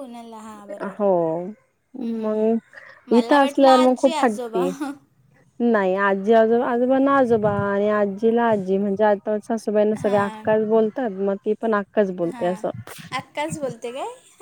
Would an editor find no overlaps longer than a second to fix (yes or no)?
no